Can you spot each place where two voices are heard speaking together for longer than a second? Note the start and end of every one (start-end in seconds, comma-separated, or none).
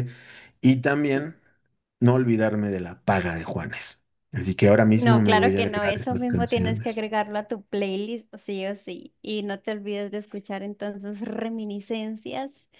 5.0-7.0